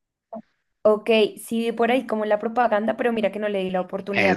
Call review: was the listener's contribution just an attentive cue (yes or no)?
no